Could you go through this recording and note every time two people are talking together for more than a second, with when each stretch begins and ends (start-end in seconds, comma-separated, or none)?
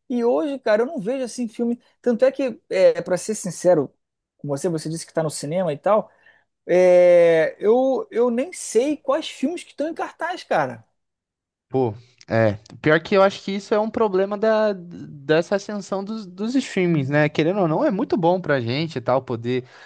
none